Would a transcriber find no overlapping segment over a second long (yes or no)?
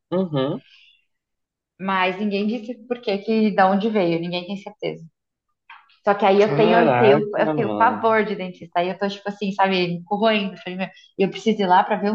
no